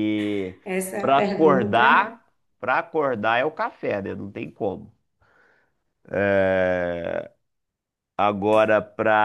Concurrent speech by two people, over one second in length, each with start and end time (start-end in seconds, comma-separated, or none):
1.0-2.2